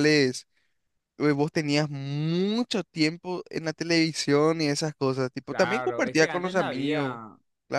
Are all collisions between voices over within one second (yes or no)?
no